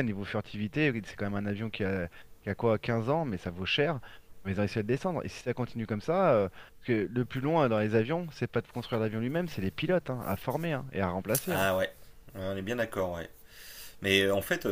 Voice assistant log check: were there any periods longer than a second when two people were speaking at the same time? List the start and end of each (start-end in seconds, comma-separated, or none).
none